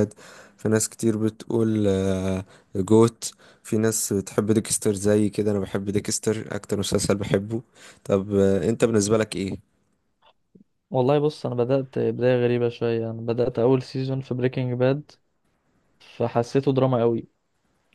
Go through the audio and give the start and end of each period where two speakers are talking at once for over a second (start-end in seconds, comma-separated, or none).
none